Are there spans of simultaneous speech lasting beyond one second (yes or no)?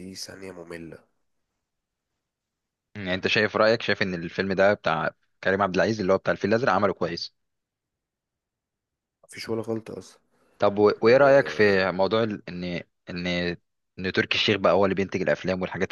no